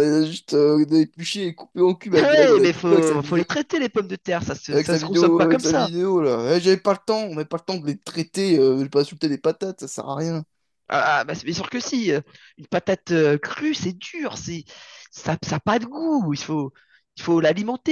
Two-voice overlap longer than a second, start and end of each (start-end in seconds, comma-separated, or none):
2.1-3.4, 4.7-5.9